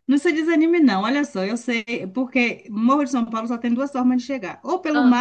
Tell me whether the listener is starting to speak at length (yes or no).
no